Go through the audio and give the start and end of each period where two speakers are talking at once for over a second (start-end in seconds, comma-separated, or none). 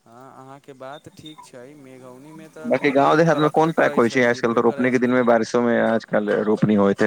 2.7-5.1